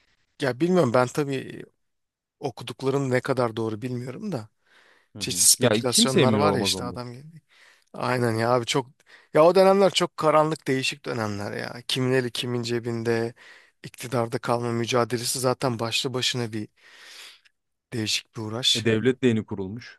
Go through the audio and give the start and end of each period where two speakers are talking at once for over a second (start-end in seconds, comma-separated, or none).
5.2-7.0